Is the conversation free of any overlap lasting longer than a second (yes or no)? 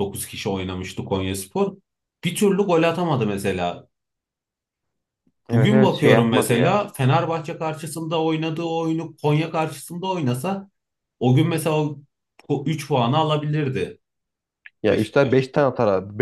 no